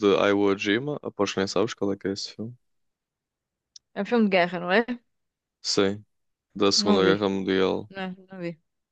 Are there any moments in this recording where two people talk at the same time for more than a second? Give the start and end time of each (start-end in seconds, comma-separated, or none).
none